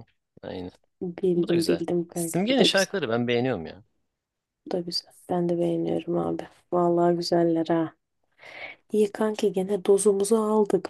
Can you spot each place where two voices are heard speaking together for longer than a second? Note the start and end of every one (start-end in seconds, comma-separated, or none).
1.4-3.0